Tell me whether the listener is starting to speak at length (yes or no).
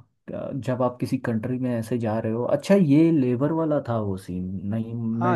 yes